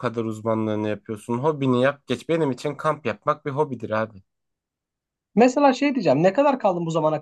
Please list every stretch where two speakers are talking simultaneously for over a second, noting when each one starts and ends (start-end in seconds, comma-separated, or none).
none